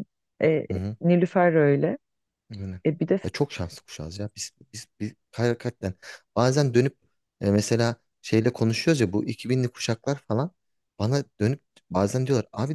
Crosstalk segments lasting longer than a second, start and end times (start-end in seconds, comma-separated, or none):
none